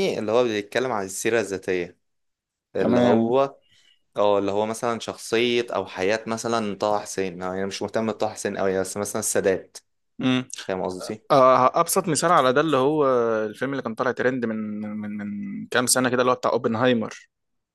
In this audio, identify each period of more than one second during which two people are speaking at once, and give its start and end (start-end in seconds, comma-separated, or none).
none